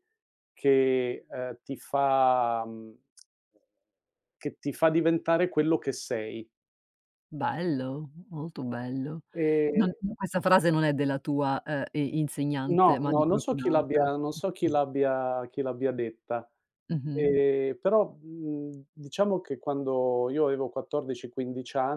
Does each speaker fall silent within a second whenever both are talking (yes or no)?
no